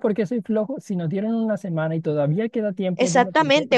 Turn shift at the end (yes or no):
yes